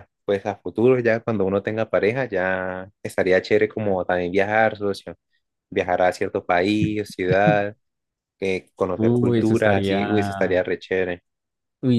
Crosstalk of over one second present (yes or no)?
yes